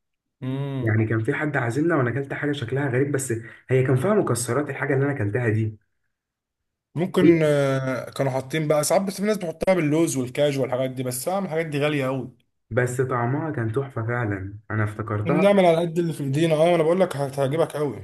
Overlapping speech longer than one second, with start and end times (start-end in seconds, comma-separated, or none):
none